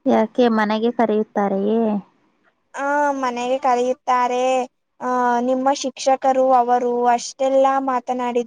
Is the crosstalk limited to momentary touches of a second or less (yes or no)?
yes